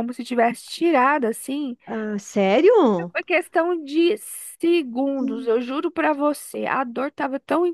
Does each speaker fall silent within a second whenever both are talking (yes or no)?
yes